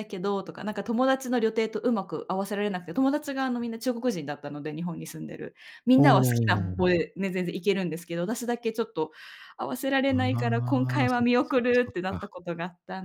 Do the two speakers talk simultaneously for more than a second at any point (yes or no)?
yes